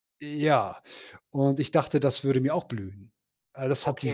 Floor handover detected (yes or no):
yes